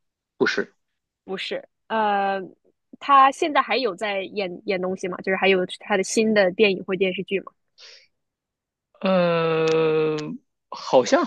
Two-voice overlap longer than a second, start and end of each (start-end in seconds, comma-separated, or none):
none